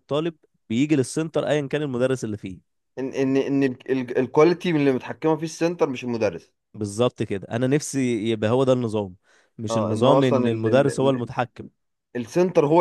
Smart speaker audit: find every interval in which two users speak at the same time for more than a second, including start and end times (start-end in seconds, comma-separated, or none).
9.7-11.3